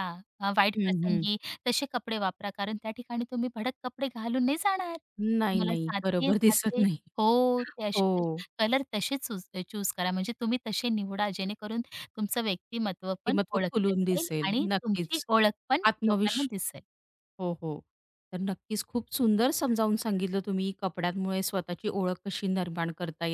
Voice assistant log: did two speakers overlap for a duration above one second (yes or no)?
yes